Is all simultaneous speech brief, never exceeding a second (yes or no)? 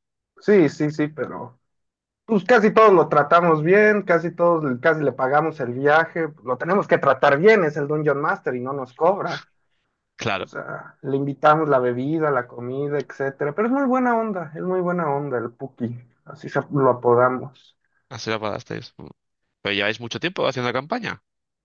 yes